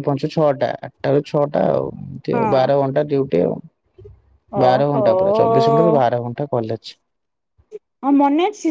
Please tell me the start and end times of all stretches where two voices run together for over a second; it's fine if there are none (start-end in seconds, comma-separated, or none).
4.7-6.0